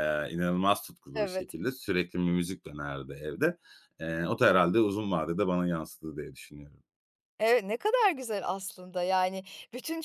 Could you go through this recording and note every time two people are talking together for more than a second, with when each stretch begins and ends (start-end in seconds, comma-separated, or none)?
none